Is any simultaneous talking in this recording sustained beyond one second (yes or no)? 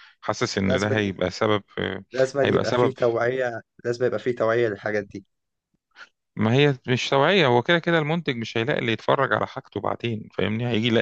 no